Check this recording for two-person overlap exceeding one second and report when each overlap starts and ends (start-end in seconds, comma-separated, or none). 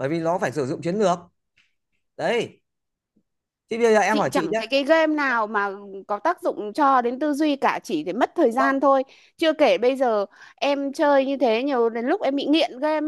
none